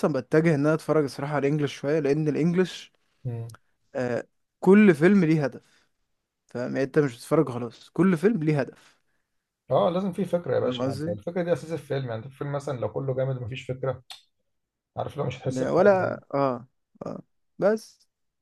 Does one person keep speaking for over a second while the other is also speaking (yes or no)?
no